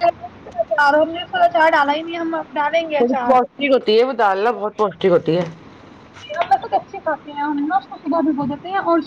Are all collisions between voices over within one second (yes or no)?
yes